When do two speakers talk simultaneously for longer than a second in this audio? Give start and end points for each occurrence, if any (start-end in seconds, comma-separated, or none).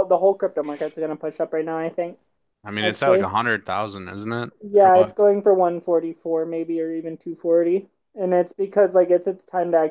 none